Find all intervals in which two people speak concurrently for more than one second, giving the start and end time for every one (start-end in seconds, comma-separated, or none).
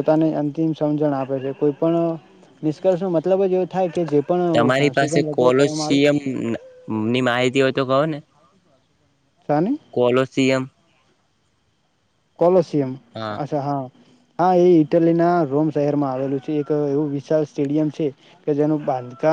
4.6-6.1